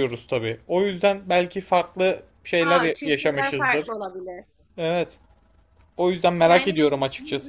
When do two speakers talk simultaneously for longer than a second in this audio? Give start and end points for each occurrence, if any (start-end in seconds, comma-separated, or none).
2.6-3.9